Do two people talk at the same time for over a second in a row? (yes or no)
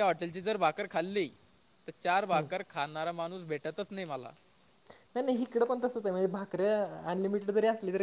no